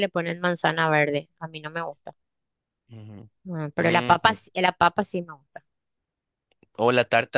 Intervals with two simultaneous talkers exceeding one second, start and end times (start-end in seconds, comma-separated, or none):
none